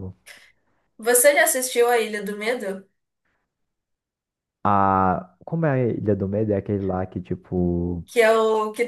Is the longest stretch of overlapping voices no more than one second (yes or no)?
yes